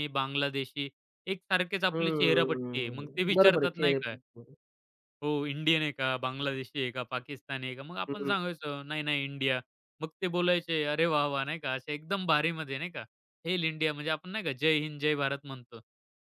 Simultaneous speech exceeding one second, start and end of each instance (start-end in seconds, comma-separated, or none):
1.9-4.1